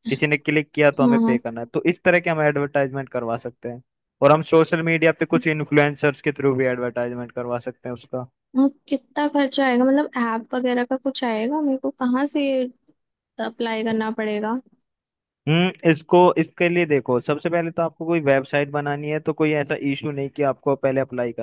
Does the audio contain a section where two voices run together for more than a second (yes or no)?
no